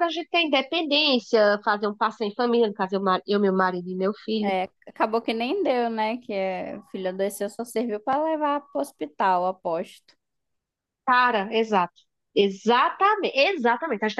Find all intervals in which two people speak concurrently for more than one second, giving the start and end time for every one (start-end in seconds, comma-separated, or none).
none